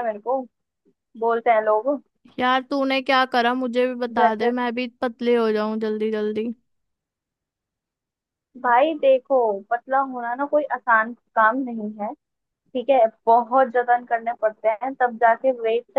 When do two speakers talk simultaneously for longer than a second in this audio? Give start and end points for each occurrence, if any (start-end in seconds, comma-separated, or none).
none